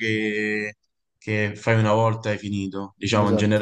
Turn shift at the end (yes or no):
no